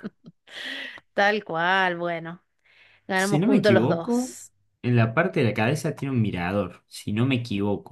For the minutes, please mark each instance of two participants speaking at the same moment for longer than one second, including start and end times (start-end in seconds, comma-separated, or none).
3.1-4.3